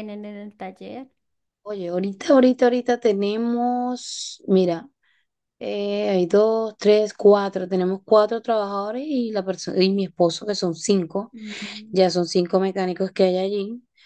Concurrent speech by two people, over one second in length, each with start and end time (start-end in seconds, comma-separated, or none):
none